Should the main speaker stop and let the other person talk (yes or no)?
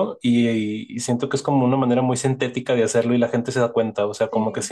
no